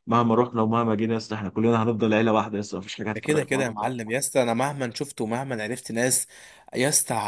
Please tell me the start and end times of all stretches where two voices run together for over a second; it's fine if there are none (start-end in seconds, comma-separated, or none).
none